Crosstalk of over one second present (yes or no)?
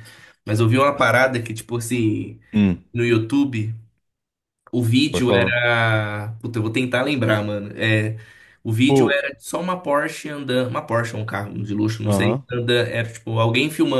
no